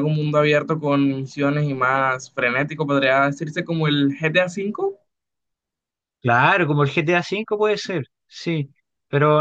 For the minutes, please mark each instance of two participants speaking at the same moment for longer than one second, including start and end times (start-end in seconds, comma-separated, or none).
none